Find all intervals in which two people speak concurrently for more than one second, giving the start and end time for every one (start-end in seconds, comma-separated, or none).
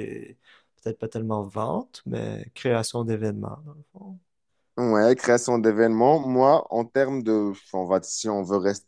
none